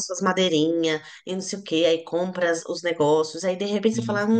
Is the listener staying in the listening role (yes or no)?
yes